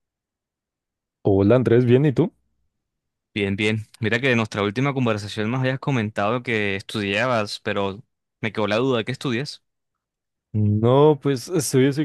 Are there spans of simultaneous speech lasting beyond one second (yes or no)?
no